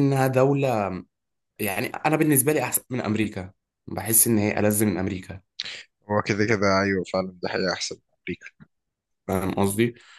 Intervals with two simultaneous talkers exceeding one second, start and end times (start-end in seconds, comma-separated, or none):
none